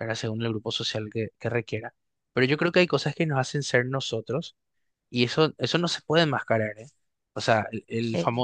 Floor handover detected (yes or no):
no